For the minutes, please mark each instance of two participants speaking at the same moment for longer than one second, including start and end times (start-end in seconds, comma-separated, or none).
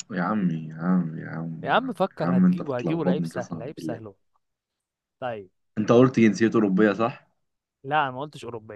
1.6-4.0